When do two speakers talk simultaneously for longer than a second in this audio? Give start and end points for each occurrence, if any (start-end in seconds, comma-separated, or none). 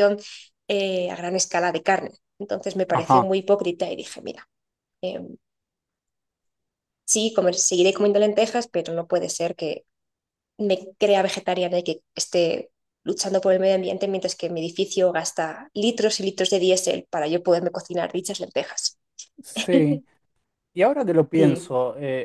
none